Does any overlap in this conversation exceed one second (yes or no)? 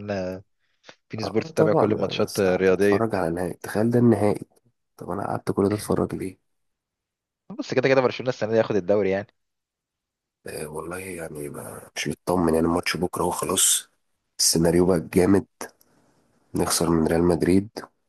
yes